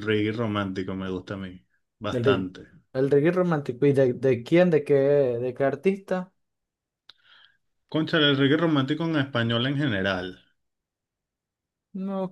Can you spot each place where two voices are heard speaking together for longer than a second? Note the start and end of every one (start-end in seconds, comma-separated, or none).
none